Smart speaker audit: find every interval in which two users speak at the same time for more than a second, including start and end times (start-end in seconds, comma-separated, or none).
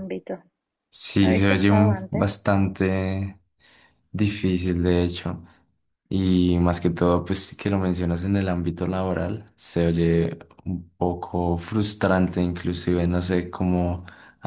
1.2-2.5